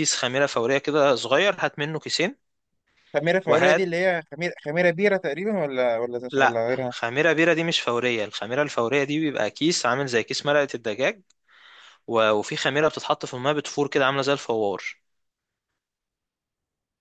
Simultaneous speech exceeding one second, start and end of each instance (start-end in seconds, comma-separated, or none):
none